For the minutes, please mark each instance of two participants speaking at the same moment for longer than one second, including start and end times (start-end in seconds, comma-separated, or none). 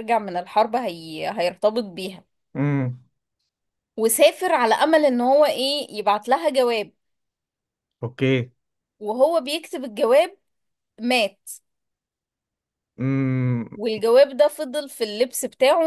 none